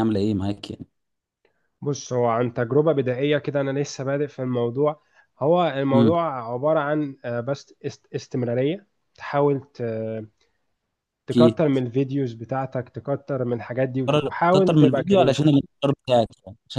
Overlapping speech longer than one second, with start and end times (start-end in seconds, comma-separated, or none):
14.1-15.5